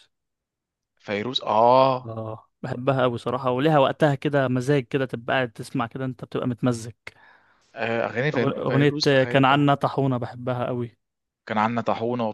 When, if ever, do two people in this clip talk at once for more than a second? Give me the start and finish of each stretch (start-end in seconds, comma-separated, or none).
8.3-9.7